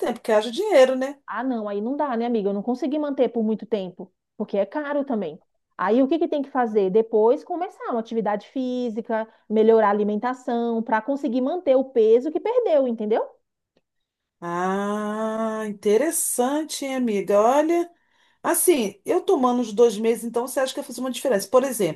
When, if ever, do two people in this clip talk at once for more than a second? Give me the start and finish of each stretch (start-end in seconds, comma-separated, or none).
none